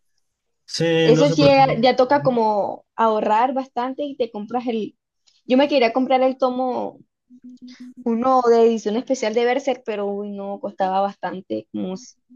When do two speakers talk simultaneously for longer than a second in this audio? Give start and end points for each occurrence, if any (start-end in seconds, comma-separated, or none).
1.0-2.4